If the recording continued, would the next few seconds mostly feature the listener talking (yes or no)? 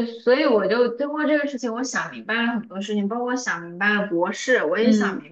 no